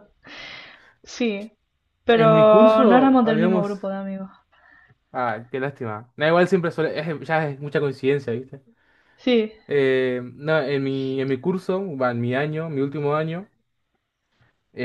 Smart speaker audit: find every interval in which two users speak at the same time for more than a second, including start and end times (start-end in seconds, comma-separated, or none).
2.1-3.8